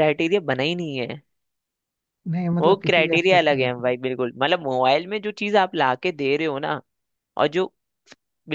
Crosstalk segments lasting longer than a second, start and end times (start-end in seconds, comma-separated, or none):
2.6-3.9